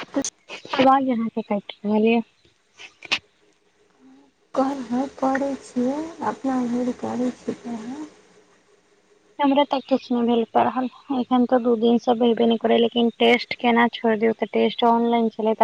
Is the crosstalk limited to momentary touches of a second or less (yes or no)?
yes